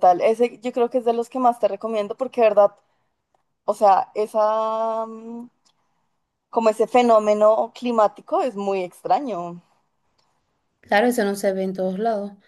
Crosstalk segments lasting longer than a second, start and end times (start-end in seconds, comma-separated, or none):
none